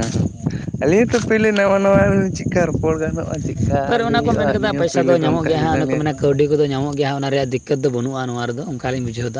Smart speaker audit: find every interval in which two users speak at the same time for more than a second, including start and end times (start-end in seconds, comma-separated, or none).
3.9-6.0